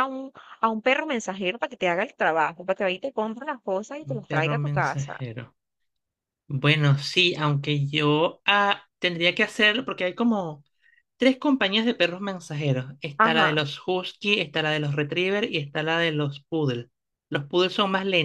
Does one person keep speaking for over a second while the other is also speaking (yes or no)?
yes